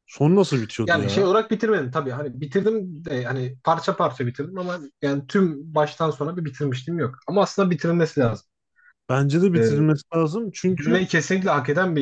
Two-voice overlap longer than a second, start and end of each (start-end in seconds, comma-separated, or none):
none